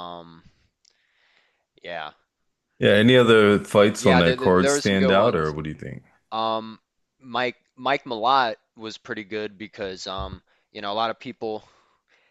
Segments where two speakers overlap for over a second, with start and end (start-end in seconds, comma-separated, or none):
4.0-5.5